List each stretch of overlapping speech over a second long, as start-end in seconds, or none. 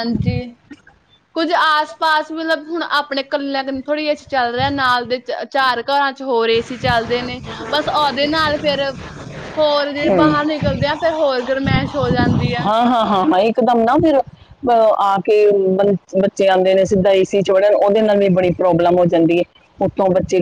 none